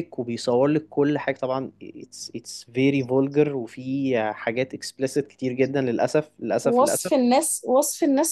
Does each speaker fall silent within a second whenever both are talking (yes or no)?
yes